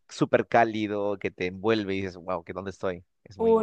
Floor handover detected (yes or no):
yes